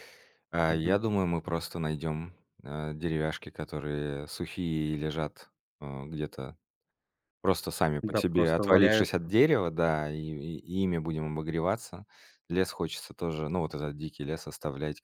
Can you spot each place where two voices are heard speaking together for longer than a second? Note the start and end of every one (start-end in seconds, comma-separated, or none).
8.0-9.3